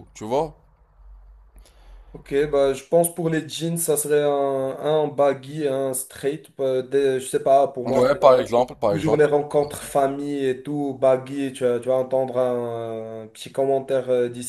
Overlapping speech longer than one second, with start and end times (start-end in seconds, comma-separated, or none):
none